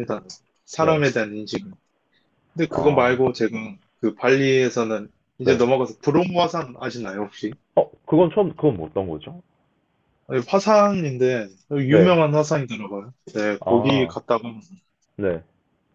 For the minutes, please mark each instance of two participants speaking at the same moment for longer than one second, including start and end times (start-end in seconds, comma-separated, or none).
none